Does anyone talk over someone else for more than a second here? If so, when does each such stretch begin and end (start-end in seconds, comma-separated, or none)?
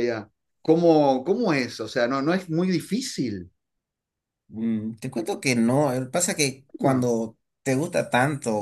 none